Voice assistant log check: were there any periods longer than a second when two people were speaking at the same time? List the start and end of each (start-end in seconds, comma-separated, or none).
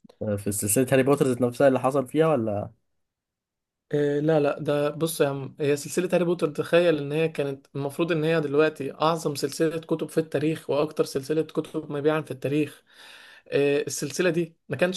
none